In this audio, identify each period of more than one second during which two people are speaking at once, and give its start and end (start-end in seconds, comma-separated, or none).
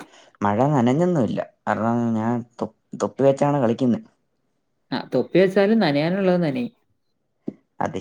none